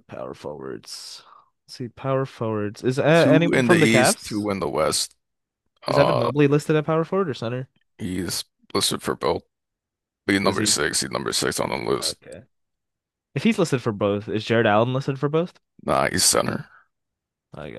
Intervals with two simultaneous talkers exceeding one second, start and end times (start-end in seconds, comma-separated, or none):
3.1-4.5